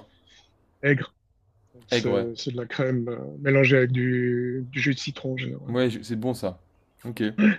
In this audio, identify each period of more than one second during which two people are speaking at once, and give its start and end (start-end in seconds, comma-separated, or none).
none